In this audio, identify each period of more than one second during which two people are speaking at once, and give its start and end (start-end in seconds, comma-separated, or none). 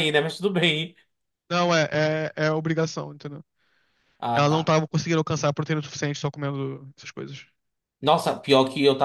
none